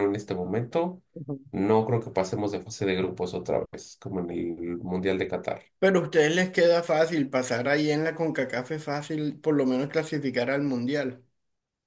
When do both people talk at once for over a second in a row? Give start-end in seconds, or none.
none